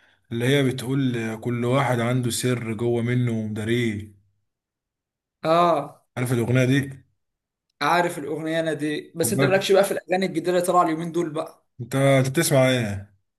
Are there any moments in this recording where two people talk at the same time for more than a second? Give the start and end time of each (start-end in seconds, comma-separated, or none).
none